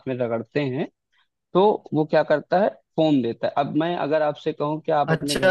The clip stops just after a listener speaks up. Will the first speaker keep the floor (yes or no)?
no